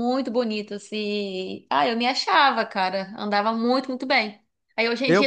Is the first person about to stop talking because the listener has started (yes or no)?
no